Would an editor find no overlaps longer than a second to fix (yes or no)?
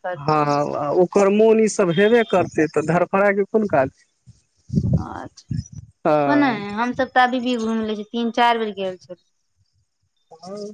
yes